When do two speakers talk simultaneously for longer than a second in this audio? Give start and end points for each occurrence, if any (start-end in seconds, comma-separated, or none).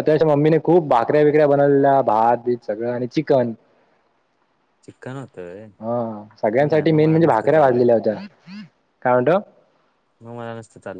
6.6-7.8